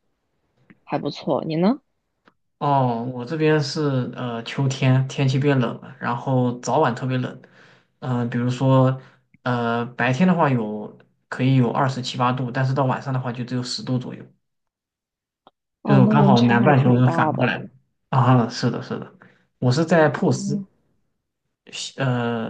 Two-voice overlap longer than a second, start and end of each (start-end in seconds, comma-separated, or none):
15.8-17.5